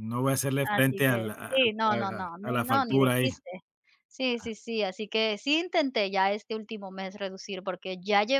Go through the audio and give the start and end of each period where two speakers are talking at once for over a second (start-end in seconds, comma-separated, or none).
0.6-3.3